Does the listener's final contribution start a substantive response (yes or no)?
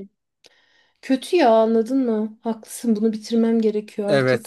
yes